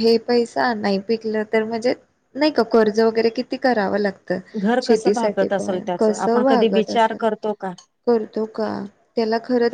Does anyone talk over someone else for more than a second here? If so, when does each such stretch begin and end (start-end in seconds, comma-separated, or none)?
4.8-7.2